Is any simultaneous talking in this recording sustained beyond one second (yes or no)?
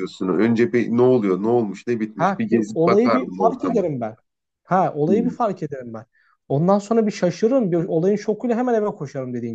yes